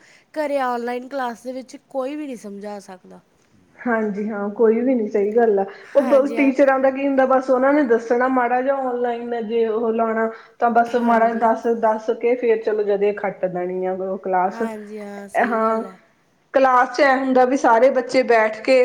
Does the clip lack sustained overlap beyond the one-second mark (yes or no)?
no